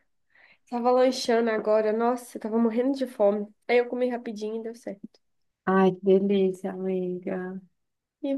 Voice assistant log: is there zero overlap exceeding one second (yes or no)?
yes